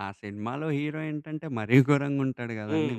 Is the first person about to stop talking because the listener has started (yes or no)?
yes